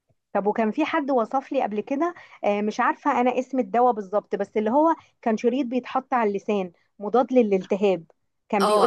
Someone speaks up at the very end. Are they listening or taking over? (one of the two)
taking over